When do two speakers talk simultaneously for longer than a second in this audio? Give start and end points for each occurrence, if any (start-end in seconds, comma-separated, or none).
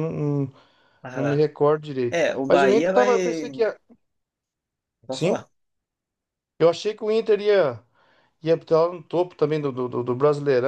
2.1-3.5